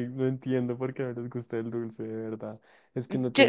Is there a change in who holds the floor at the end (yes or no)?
no